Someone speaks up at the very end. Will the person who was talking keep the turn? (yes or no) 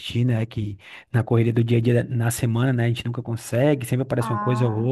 yes